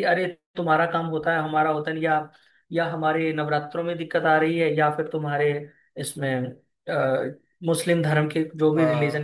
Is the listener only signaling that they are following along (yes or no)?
yes